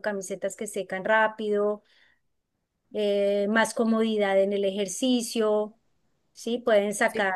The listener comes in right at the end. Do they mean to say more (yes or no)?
no